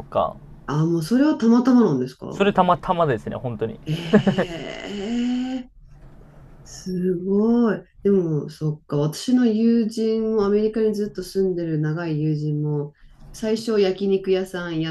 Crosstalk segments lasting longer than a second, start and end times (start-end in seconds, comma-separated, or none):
none